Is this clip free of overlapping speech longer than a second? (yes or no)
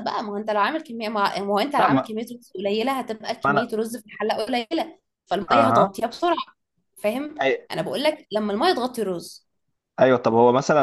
yes